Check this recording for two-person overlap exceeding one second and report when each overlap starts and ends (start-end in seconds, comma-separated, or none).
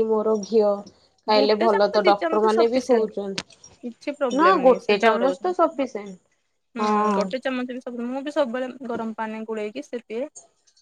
1.4-3.1, 3.8-5.6